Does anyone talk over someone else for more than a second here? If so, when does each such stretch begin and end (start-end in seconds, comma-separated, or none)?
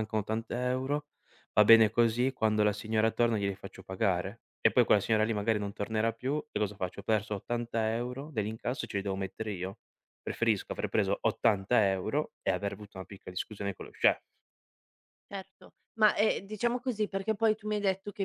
none